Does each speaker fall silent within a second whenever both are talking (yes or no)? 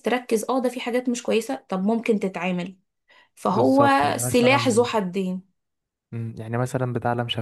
no